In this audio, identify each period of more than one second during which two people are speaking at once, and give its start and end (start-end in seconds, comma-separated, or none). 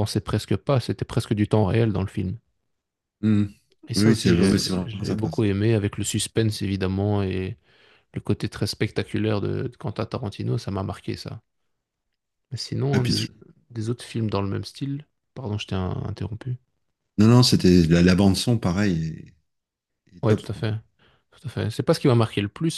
4.0-5.5